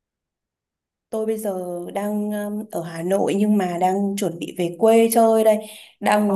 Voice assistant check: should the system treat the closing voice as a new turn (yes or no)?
no